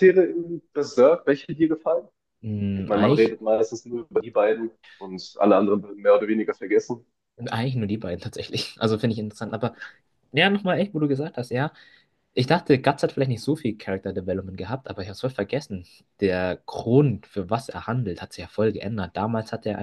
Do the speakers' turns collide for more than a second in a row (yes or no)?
no